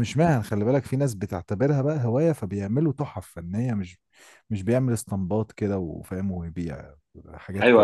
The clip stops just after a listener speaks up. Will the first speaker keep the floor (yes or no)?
no